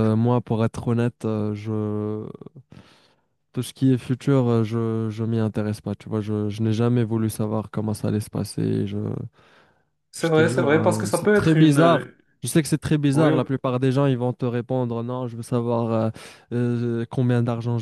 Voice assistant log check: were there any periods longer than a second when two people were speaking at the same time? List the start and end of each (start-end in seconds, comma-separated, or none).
10.2-12.1